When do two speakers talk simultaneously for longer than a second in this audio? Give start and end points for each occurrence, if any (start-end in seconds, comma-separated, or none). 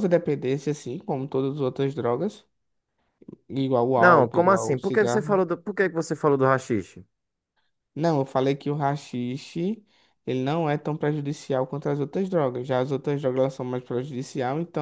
4.0-5.4